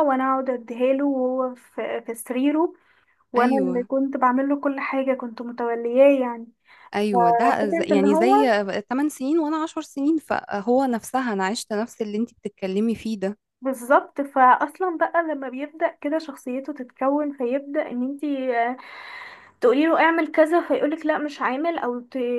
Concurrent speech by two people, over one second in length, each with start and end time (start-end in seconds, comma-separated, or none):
7.1-8.4